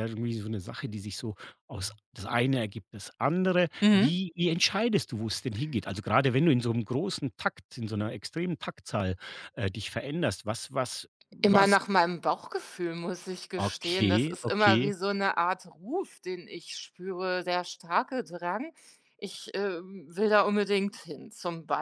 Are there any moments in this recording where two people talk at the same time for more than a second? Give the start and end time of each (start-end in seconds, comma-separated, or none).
13.6-14.9